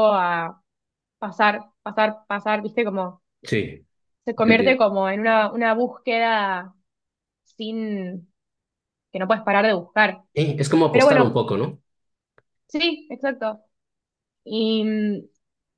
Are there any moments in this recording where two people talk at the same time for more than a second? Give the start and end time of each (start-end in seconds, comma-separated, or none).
none